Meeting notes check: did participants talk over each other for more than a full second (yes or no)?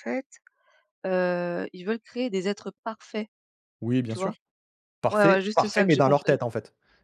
yes